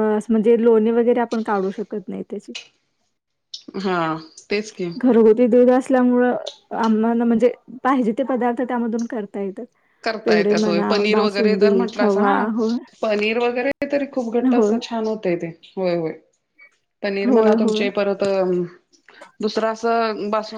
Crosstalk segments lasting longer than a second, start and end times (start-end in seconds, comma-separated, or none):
10.2-12.4